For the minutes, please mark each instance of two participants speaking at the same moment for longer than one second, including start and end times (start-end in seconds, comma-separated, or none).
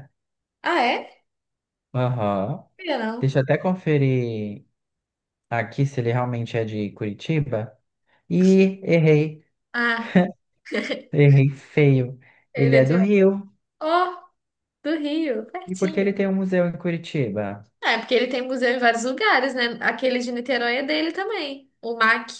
none